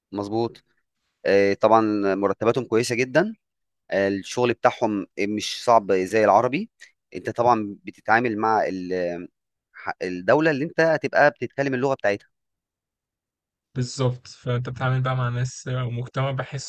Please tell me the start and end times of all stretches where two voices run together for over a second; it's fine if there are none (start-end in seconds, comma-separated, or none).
none